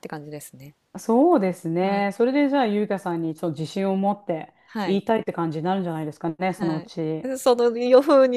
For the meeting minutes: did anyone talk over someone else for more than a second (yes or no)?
no